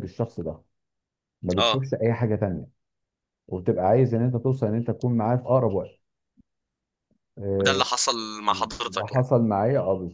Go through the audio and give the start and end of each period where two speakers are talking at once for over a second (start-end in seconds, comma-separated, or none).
none